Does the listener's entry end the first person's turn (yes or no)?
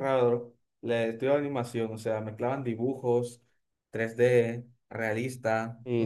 yes